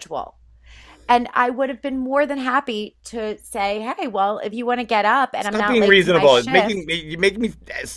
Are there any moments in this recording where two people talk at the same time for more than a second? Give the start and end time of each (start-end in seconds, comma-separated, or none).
5.4-7.0